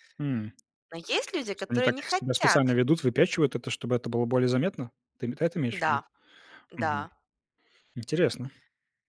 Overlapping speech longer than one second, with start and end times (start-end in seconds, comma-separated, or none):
1.5-2.8